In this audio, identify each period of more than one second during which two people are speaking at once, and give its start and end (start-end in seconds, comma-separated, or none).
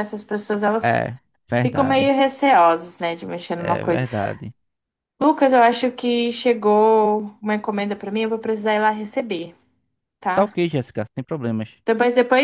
none